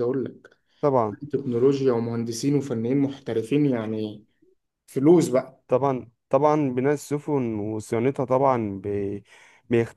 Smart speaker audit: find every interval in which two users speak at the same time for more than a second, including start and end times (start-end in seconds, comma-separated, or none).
none